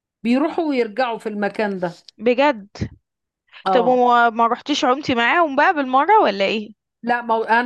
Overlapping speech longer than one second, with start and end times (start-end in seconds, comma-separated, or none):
none